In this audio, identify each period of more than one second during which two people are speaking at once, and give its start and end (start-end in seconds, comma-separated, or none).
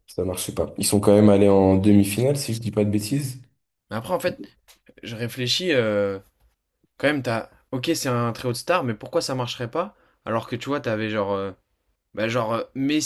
none